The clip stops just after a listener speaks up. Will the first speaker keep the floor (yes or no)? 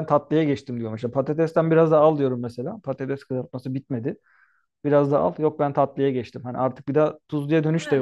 no